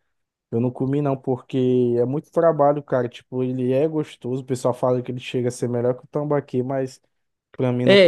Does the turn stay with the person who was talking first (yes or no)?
no